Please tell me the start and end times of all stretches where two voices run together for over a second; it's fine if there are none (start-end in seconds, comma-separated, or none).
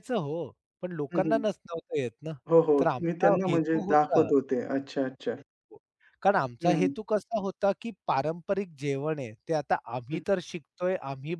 2.8-4.3